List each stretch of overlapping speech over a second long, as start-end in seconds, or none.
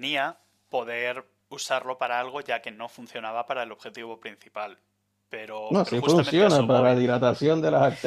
5.7-7.0